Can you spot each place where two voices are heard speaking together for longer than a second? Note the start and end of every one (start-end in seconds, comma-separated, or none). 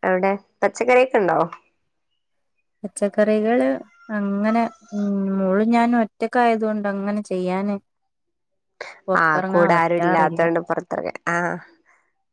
9.2-10.4